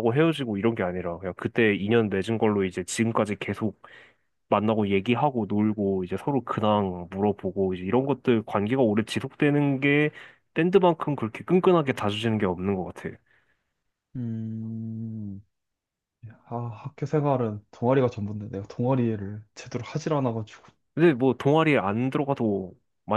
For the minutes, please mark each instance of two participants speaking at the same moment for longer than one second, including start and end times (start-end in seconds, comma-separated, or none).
none